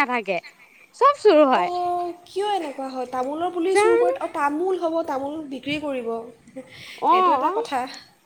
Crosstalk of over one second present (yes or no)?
no